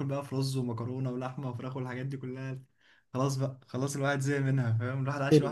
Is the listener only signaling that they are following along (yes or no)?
yes